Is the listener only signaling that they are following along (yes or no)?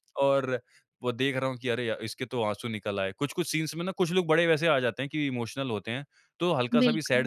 yes